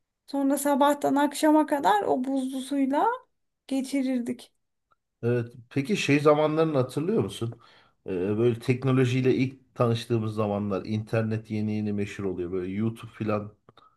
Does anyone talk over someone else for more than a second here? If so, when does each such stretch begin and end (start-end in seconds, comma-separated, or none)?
none